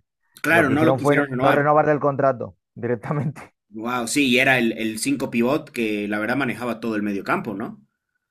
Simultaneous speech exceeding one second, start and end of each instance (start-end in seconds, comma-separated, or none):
0.5-1.7